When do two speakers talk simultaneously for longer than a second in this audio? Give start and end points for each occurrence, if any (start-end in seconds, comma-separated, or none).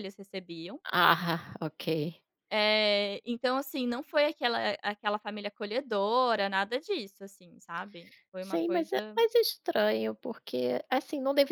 none